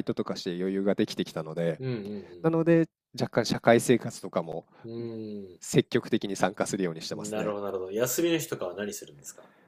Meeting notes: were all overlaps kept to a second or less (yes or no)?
yes